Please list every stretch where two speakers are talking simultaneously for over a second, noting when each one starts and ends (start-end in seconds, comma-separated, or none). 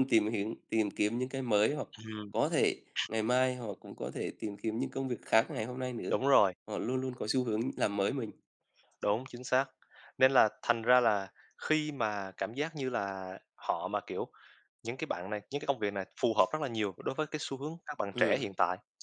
none